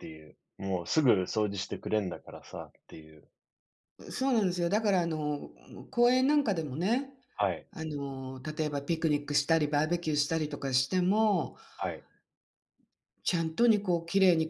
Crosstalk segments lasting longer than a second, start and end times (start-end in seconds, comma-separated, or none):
none